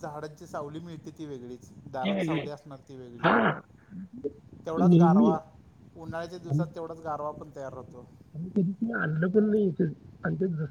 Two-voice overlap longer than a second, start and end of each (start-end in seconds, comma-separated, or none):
none